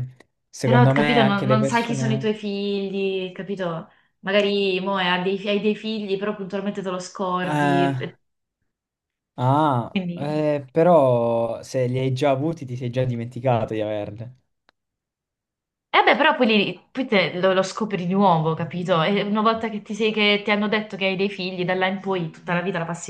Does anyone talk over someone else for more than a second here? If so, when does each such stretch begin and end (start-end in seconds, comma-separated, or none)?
0.6-2.3